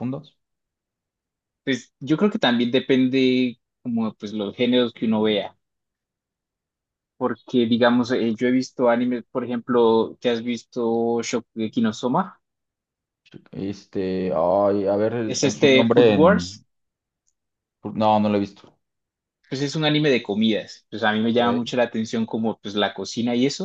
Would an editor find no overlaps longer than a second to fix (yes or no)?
no